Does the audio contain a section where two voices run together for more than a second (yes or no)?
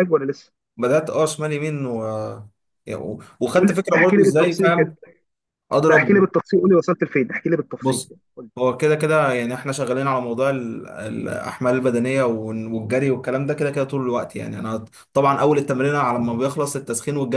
yes